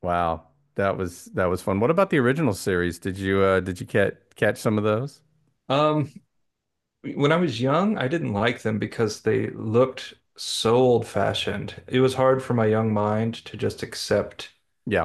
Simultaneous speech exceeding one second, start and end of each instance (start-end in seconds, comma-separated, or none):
none